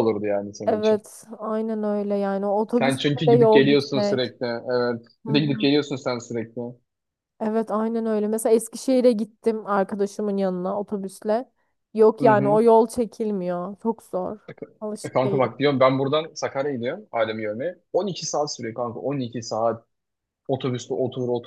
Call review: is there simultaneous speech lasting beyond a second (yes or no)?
yes